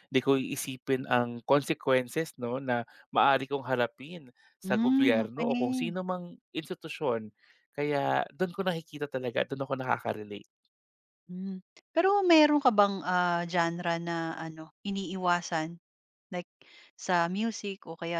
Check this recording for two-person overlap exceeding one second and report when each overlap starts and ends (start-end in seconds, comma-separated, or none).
4.6-6.0